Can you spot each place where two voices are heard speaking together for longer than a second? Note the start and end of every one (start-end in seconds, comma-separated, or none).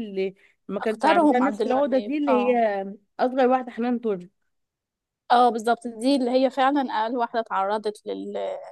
0.8-2.5